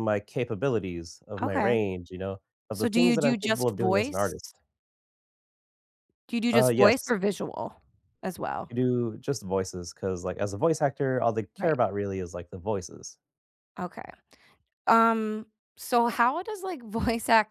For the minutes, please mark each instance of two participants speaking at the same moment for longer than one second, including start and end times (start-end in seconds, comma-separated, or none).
2.7-4.3